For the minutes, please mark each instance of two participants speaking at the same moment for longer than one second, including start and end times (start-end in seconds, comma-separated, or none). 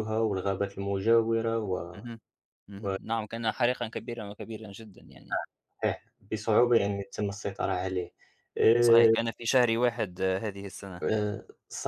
none